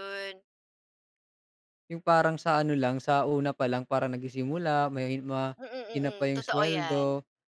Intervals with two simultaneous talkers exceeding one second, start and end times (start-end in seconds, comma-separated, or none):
5.6-7.0